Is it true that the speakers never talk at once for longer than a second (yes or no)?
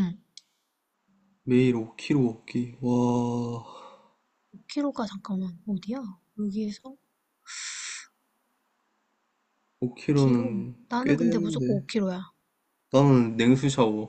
no